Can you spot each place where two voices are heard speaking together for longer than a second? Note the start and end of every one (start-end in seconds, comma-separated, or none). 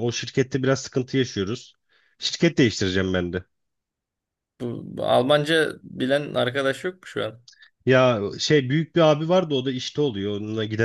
none